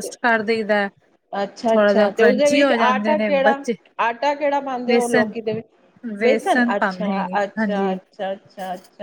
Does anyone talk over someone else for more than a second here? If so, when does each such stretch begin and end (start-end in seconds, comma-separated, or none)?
1.7-3.6, 6.2-8.0